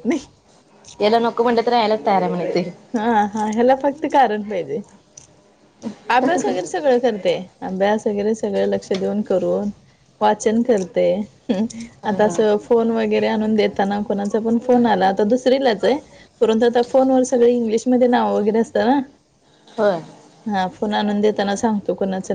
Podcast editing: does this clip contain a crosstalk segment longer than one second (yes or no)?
no